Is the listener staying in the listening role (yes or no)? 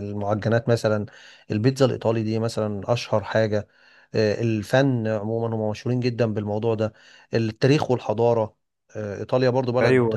no